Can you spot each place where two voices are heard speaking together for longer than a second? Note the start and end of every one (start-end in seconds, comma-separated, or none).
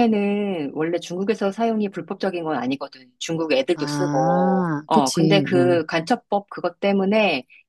3.7-5.8